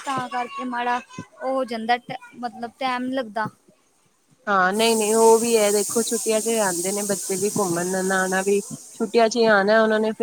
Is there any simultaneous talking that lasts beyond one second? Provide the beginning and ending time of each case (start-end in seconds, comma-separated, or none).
none